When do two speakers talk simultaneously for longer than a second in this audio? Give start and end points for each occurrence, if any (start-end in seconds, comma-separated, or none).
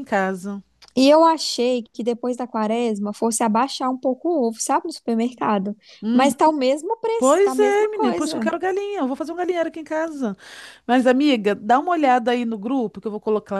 7.2-8.5